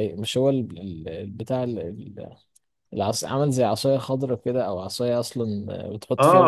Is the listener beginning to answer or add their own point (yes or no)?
yes